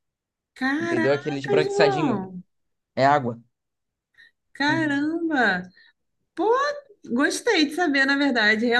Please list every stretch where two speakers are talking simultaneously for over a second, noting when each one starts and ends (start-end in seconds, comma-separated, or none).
0.8-2.3